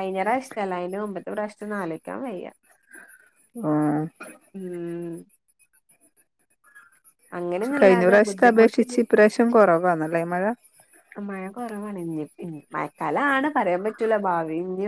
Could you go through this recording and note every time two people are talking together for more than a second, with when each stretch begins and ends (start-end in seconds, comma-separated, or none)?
7.5-9.0